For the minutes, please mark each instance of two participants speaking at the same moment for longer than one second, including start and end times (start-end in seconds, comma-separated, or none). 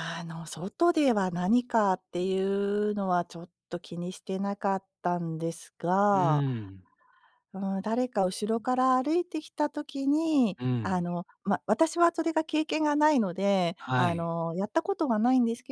none